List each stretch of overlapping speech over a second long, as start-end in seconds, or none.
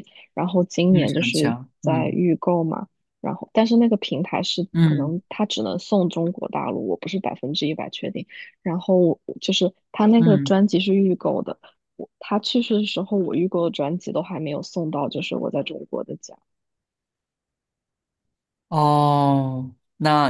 0.9-2.2